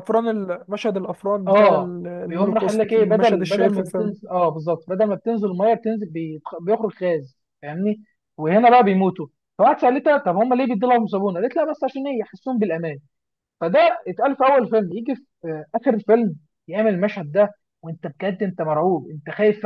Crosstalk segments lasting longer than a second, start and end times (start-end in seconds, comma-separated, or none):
1.5-4.1